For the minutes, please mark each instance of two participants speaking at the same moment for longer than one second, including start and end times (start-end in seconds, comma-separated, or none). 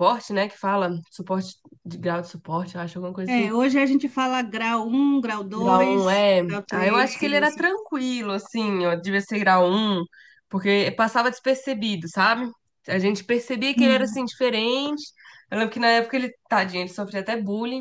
5.5-7.6